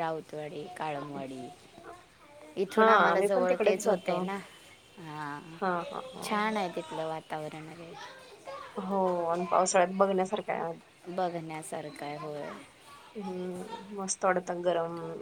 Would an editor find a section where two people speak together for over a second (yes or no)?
yes